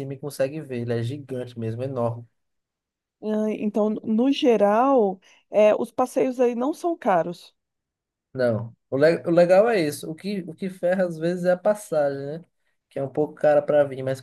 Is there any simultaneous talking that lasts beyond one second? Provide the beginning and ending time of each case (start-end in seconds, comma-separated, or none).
none